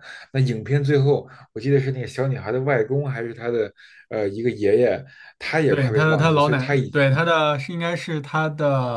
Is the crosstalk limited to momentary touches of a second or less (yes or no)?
no